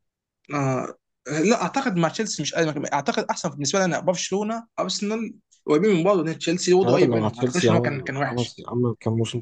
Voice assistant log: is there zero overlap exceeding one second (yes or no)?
no